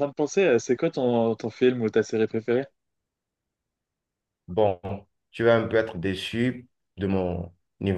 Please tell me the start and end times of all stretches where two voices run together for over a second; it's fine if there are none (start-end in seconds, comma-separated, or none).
none